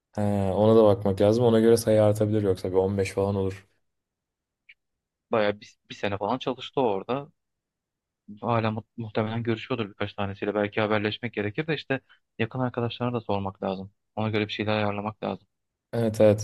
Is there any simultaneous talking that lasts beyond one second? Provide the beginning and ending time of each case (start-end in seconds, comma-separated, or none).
none